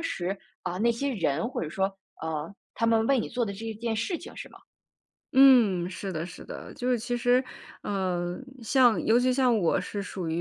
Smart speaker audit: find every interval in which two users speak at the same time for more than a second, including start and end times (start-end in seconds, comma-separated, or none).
none